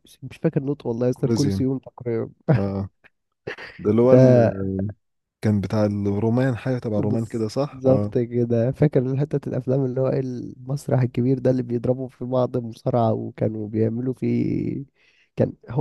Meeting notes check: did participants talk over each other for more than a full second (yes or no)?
yes